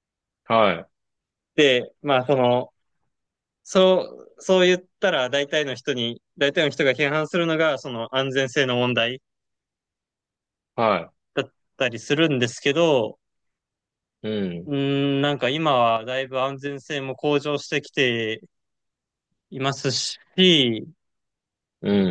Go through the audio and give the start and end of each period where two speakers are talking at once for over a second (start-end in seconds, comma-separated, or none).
none